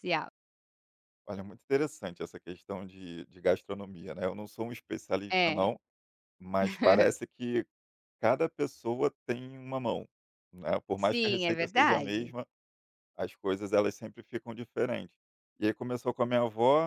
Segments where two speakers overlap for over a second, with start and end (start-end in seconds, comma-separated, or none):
10.9-12.3